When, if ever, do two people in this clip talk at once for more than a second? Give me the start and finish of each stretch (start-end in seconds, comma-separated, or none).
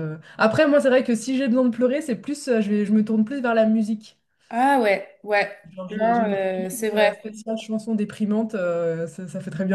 5.7-7.2